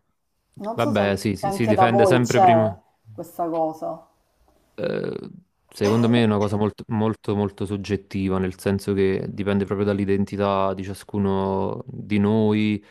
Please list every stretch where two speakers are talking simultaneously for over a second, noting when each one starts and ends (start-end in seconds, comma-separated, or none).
0.7-2.6